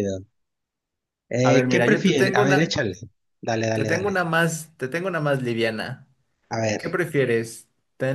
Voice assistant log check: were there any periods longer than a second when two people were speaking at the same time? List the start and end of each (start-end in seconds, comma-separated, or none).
1.4-2.6